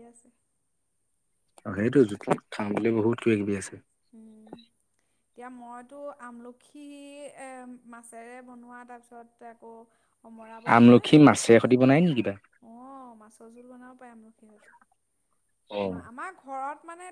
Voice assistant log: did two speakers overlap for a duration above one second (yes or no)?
yes